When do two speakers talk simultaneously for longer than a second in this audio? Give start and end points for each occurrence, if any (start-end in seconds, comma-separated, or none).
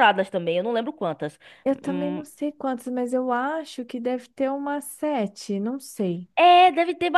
none